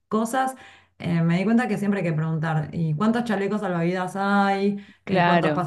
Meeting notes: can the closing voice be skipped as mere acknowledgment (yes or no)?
yes